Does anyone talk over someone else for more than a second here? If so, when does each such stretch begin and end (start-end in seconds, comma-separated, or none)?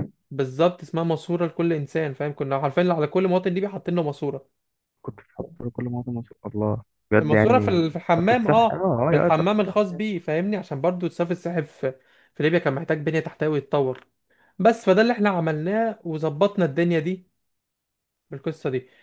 7.2-9.8